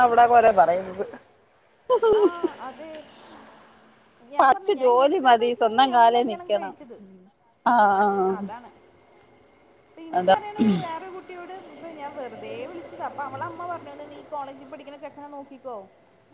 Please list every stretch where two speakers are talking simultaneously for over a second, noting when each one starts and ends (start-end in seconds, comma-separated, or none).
4.4-6.8